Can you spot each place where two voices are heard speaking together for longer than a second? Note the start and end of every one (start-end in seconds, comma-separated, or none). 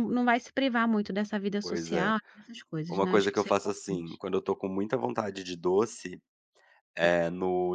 2.9-4.2